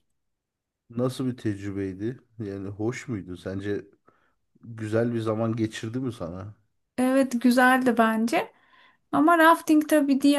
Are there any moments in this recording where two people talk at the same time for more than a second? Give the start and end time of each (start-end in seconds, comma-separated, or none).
none